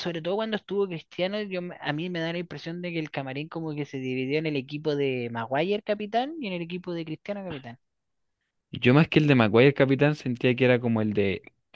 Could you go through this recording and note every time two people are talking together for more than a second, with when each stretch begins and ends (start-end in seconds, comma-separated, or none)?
none